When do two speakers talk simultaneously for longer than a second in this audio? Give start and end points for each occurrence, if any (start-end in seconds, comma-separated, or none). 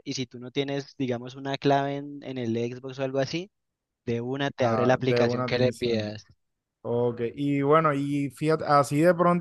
4.6-6.1